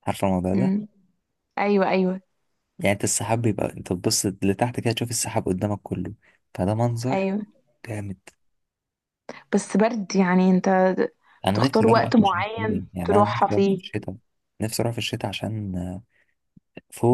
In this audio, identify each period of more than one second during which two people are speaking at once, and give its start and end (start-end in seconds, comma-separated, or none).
11.5-13.8